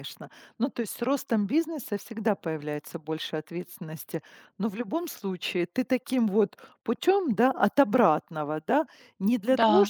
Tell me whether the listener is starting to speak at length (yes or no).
no